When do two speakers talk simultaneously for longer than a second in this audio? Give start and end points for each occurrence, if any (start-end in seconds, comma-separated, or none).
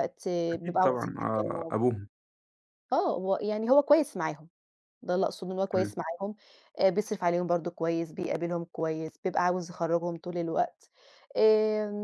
0.5-1.7